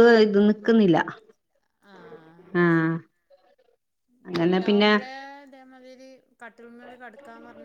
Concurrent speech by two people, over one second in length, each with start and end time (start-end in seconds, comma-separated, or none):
none